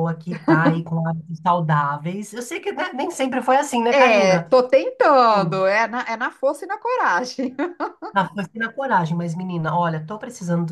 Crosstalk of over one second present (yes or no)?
no